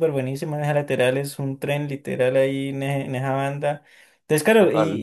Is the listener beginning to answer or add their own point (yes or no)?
no